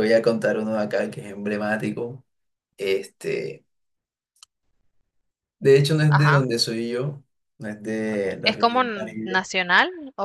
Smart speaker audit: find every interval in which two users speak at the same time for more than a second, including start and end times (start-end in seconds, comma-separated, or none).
8.1-9.4